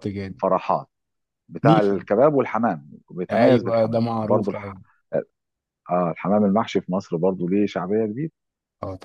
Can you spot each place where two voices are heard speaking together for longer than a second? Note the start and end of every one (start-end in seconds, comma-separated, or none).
3.3-4.7